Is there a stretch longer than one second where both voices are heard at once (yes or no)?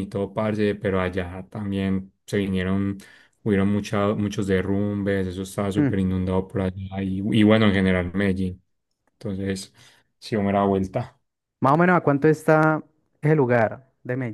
no